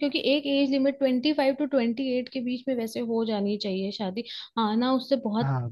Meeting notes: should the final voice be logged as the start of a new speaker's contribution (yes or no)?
no